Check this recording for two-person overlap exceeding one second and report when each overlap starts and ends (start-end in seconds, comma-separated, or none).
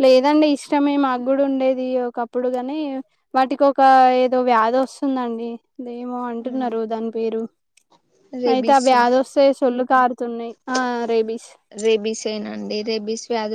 none